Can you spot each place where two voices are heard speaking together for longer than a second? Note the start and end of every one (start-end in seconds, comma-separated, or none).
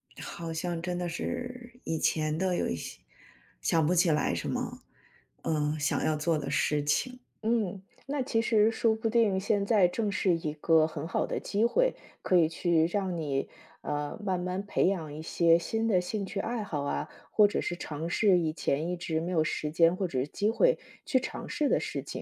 none